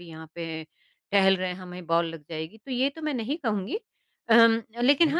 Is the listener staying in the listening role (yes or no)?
yes